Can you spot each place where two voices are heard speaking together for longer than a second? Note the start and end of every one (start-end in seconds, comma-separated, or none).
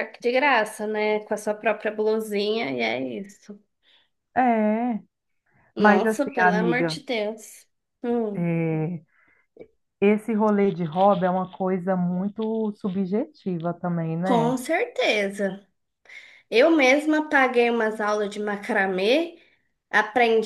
5.8-7.0